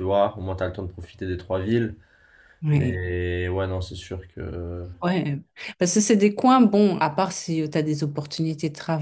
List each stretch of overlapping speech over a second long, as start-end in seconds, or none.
none